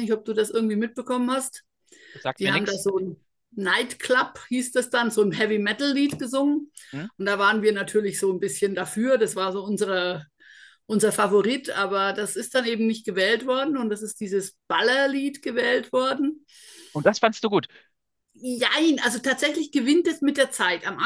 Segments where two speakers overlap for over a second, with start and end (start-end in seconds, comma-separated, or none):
none